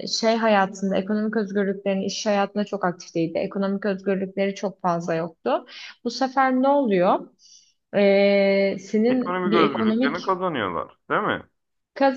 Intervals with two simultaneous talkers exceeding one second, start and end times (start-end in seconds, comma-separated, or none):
9.1-10.3